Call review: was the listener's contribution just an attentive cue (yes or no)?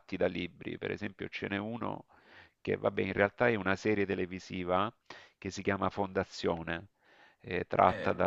yes